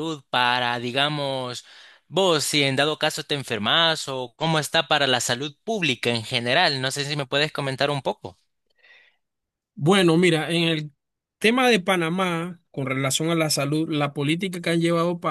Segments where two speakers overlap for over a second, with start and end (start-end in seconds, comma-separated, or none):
none